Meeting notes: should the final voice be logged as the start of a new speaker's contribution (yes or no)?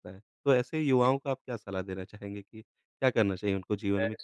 yes